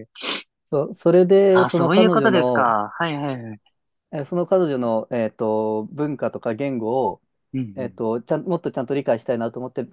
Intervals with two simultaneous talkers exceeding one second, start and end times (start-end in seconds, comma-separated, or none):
1.5-2.8